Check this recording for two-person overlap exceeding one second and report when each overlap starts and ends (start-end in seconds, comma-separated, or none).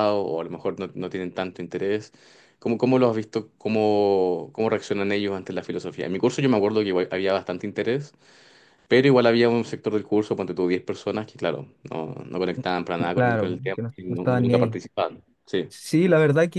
13.1-14.8